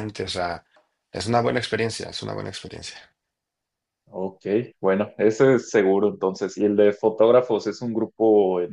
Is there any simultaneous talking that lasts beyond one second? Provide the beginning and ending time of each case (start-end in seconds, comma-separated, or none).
none